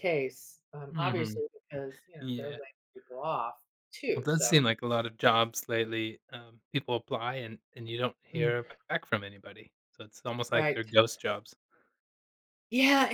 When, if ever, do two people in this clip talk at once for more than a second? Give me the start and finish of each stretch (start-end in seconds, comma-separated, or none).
none